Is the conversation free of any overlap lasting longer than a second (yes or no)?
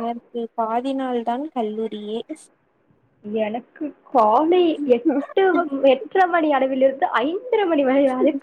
yes